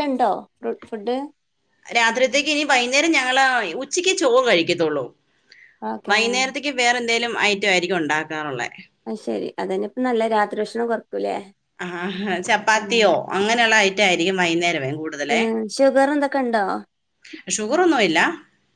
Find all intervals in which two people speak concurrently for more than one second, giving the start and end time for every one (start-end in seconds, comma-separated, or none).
none